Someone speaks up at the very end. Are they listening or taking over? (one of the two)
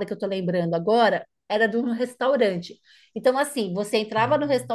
listening